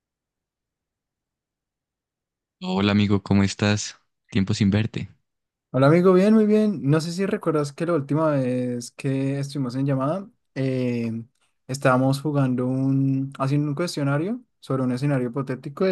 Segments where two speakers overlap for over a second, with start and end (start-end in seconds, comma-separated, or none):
none